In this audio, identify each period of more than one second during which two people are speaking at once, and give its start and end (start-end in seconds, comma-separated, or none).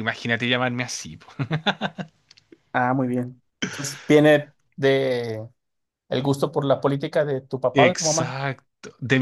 none